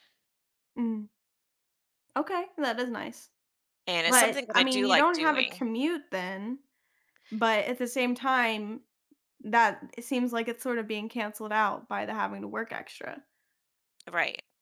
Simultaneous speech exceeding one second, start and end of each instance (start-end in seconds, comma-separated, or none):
4.1-5.6